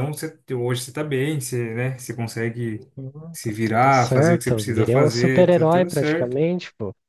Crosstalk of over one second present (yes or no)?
yes